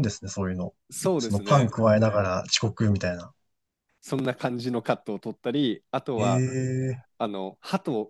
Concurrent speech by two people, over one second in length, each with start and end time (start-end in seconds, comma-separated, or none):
none